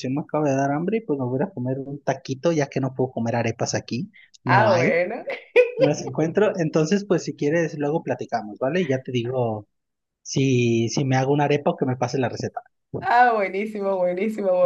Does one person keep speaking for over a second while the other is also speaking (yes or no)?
no